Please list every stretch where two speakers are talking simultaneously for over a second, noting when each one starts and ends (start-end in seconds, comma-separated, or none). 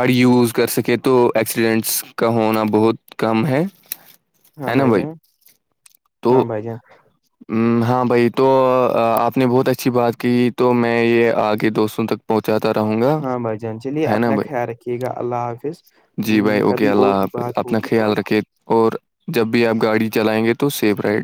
16.3-18.3